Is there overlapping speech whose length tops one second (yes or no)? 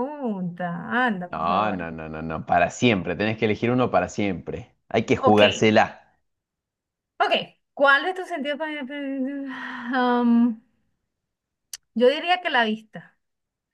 no